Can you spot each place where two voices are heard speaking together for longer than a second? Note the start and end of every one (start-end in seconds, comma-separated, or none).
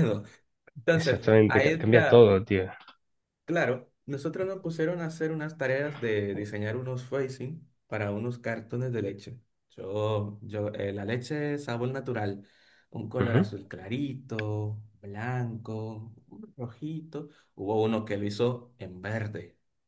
0.9-2.3